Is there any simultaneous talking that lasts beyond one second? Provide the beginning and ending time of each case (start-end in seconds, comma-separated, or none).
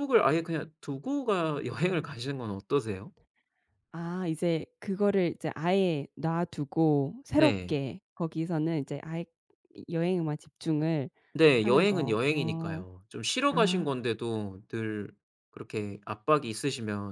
11.6-12.8